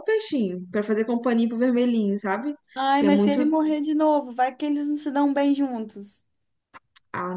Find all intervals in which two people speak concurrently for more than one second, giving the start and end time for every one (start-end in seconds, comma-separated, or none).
none